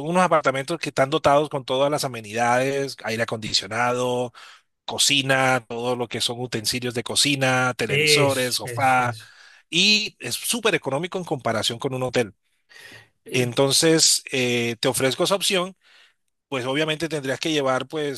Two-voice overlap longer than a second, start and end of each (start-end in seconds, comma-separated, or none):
7.9-9.2